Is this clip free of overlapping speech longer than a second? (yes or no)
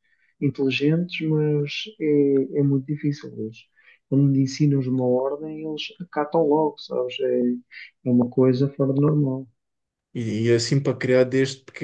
yes